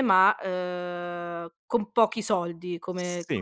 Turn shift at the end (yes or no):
yes